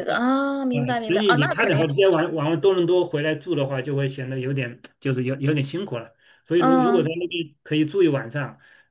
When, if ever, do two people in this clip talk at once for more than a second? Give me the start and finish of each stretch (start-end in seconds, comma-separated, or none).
0.7-1.9